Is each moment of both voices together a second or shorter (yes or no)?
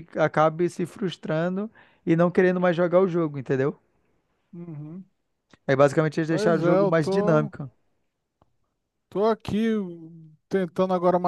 no